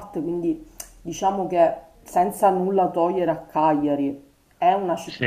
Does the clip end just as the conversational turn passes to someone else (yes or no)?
no